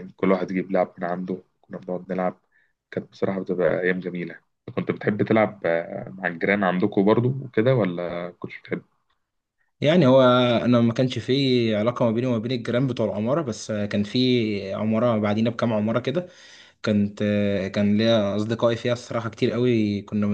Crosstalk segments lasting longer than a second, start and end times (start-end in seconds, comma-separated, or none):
none